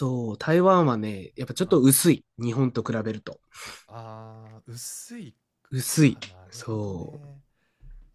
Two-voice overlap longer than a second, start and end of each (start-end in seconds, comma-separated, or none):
5.9-7.4